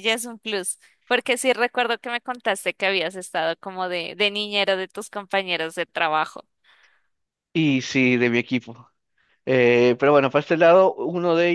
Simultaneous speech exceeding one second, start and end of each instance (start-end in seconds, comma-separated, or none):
none